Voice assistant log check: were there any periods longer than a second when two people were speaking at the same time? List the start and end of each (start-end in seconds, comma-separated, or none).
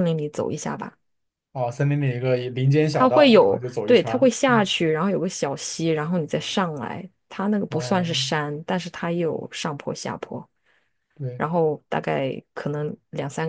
2.9-4.3